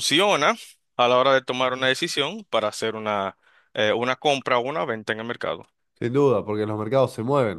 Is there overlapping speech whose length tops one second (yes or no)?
no